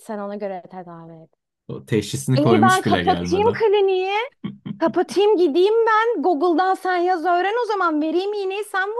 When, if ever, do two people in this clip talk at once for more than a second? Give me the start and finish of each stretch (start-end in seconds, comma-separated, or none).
2.4-3.6